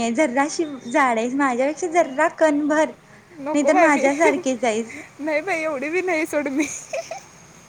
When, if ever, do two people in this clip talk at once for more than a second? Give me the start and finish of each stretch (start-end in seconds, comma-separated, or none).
3.5-5.0